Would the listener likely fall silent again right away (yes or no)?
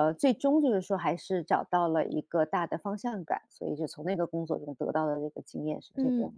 no